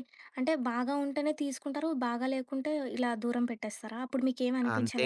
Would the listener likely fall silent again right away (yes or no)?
no